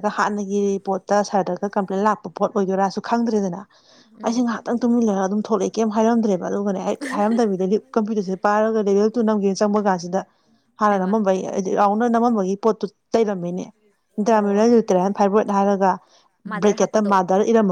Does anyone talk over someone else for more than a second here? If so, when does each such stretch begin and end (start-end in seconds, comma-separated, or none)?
none